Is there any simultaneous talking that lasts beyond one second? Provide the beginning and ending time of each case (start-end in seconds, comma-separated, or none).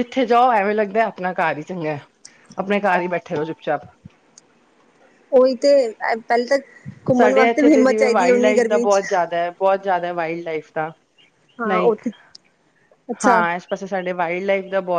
7.2-9.0